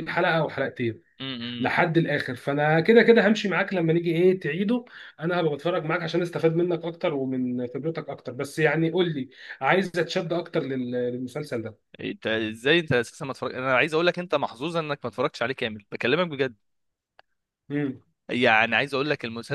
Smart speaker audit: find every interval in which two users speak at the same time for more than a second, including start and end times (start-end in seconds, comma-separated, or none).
none